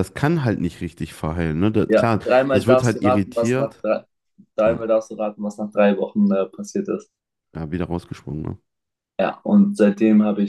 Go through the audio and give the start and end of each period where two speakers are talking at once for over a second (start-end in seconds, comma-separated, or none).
1.9-3.8